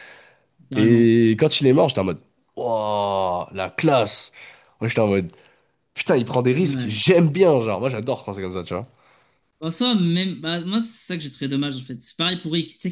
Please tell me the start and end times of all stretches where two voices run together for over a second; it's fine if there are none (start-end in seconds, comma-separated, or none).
none